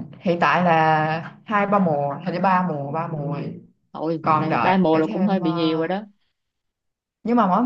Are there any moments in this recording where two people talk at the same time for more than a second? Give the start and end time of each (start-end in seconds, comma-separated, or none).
4.2-5.9